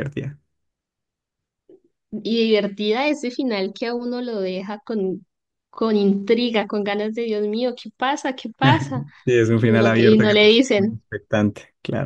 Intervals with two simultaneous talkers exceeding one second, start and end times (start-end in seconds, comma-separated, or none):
9.6-11.0